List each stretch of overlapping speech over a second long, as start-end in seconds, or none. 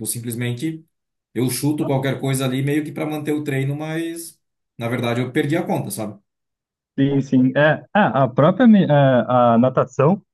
none